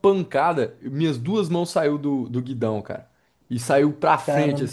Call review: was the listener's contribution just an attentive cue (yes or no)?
yes